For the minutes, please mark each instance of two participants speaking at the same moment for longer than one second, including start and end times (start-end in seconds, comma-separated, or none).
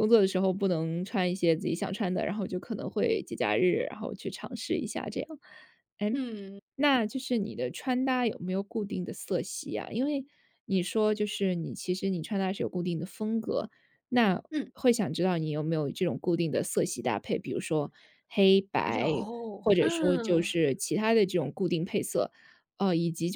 18.8-20.5